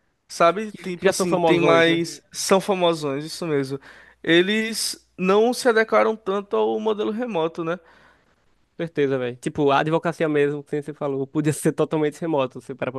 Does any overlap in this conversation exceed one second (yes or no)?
yes